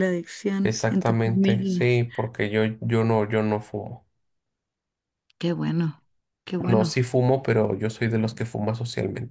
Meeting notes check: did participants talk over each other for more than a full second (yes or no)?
yes